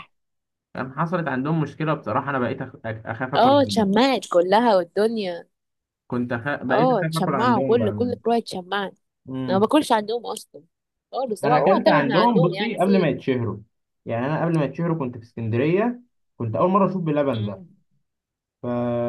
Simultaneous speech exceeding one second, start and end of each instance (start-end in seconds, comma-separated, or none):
6.7-8.2, 11.4-13.2